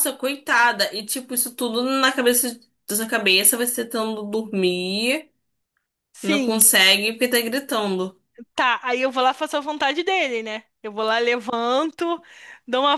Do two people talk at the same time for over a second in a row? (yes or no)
no